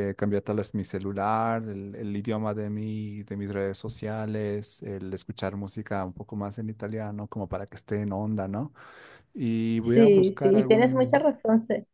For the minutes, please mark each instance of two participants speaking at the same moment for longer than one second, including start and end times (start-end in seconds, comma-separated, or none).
9.8-11.3